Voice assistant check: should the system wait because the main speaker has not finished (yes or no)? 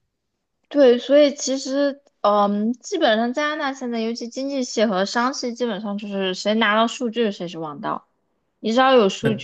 yes